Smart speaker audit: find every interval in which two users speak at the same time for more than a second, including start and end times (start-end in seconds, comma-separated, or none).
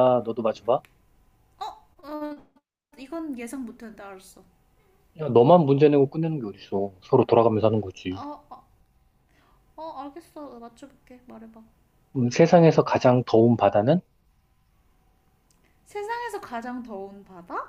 none